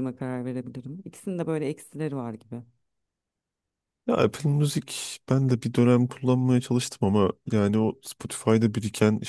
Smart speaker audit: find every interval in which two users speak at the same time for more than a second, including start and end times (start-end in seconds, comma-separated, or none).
none